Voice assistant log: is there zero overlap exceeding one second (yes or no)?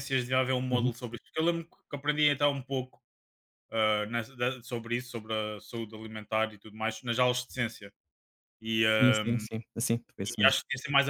yes